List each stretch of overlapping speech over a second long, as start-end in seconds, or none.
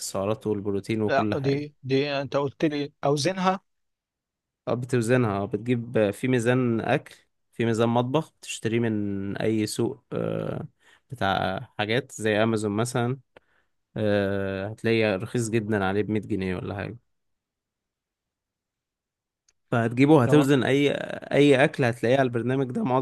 none